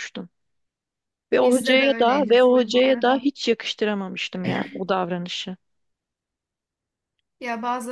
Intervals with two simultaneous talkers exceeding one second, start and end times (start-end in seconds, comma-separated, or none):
1.4-3.3